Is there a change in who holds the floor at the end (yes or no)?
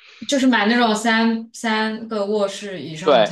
yes